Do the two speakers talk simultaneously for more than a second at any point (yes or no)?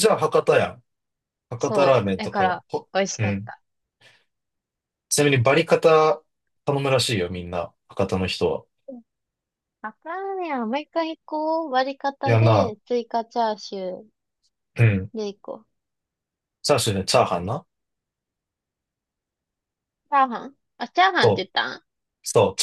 yes